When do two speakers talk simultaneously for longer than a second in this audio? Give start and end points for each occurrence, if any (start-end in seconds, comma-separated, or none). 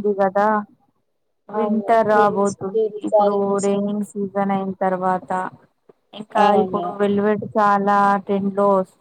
1.6-3.7